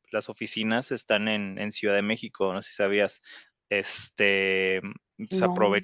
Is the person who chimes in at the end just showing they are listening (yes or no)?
yes